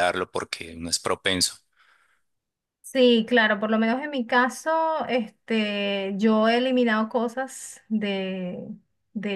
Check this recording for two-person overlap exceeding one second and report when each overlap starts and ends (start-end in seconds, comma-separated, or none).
none